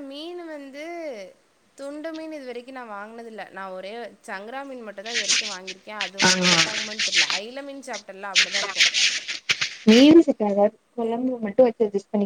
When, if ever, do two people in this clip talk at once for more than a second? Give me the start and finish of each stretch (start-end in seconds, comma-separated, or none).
none